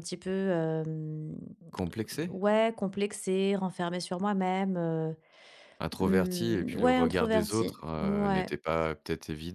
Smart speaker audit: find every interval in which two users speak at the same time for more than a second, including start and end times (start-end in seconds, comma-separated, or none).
6.0-8.5